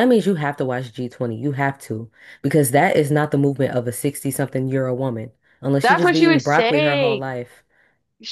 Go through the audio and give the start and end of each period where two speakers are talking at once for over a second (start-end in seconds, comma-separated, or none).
5.8-7.3